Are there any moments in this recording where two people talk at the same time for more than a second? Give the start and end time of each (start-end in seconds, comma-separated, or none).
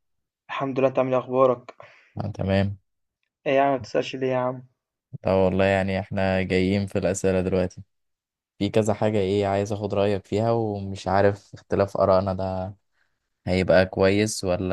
none